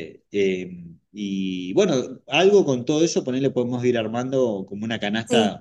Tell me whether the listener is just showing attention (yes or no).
no